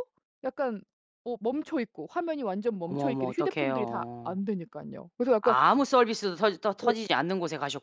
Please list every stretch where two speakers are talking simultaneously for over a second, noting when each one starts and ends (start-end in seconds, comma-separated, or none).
2.9-4.4